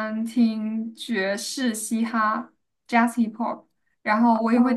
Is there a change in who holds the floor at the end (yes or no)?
no